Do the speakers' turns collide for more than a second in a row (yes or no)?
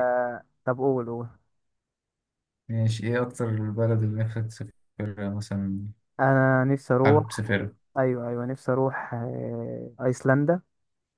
no